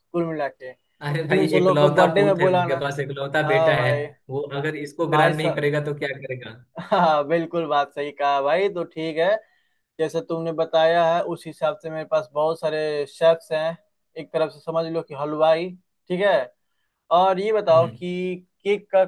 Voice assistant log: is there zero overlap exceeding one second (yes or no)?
no